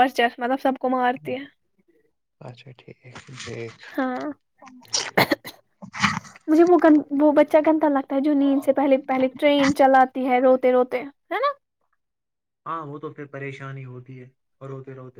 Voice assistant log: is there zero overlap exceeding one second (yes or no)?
yes